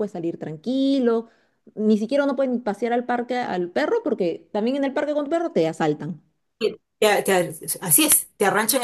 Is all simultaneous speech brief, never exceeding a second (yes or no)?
yes